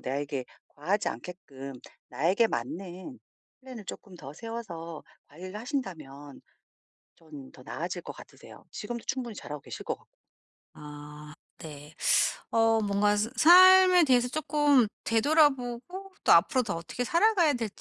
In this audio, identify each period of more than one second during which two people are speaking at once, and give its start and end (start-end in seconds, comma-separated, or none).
none